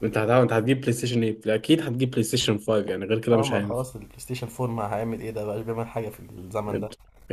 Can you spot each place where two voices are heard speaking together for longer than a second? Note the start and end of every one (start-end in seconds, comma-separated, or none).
none